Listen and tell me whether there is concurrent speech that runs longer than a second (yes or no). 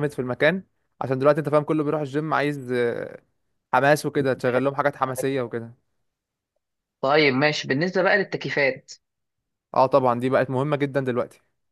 no